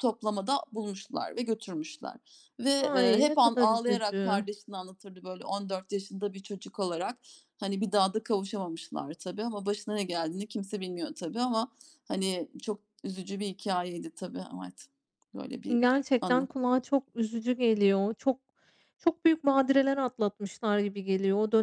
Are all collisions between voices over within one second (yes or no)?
no